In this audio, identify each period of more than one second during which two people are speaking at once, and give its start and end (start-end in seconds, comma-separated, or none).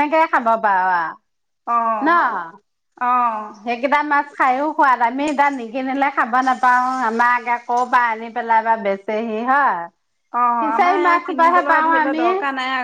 10.6-12.2